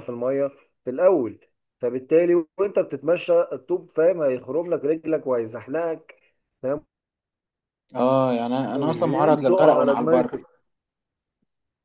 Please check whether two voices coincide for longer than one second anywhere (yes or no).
yes